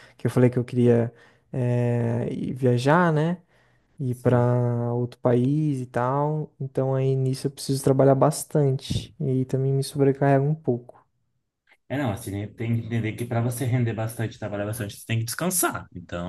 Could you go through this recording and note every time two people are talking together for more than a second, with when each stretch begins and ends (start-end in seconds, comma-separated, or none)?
none